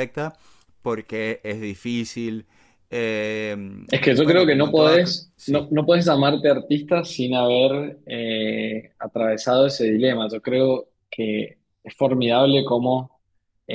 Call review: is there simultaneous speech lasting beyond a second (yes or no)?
yes